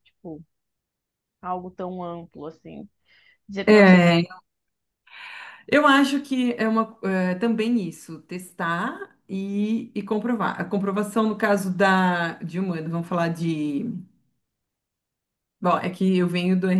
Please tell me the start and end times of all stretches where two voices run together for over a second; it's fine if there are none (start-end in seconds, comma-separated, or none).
none